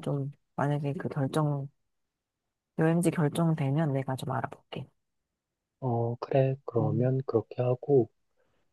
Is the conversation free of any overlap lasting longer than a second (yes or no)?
yes